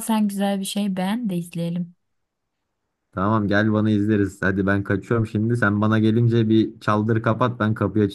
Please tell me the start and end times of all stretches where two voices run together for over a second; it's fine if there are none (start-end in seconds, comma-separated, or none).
none